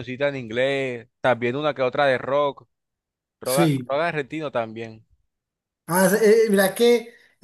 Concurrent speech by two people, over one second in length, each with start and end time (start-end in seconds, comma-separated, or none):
none